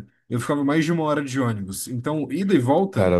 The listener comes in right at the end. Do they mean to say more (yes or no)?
no